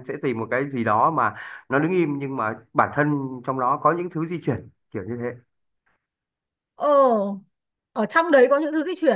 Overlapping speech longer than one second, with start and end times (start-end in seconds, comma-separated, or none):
none